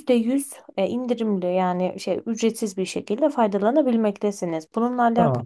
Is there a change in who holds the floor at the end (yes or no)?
yes